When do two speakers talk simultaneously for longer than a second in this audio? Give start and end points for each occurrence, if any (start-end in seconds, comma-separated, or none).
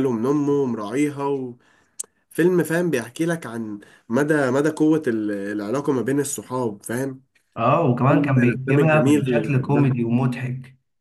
8.1-9.9